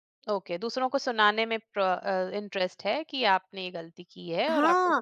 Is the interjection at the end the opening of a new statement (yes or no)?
yes